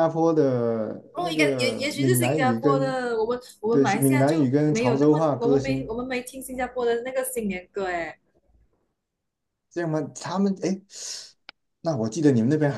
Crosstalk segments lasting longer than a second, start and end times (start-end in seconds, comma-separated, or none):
1.1-3.0, 3.7-6.0